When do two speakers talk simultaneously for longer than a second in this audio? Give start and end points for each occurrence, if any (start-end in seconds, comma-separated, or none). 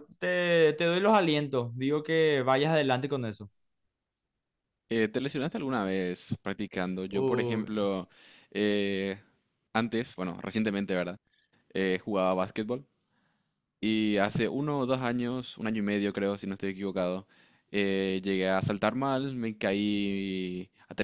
none